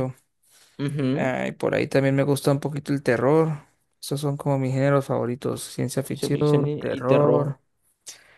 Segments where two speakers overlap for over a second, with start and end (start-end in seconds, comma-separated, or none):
6.1-7.6